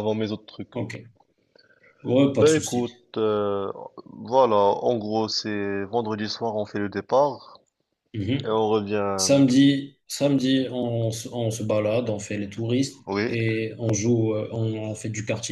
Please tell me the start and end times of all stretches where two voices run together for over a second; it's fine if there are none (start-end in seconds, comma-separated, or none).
none